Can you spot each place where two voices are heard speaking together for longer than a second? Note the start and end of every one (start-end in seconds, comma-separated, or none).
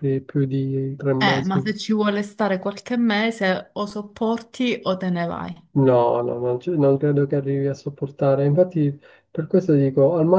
none